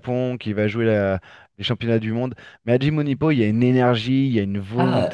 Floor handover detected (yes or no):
yes